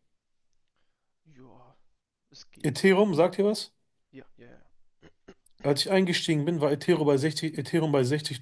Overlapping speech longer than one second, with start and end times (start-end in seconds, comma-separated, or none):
none